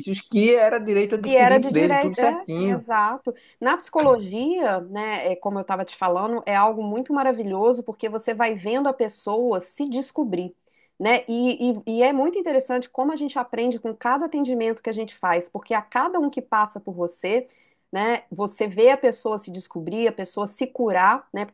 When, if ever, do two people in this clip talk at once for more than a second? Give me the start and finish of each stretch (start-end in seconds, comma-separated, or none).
1.2-2.8